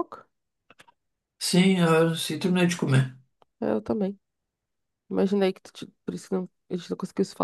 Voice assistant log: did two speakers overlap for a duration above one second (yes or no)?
no